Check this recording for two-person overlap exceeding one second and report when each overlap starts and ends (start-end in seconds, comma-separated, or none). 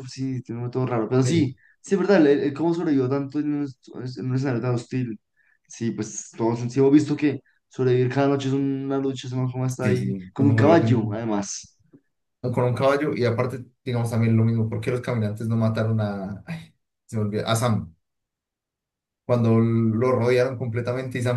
9.8-11.2